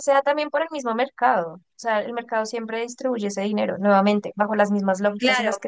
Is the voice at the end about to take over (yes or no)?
yes